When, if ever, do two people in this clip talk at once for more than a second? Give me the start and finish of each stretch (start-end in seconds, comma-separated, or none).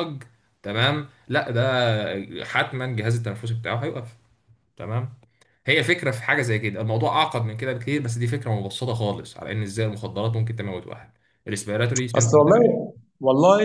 none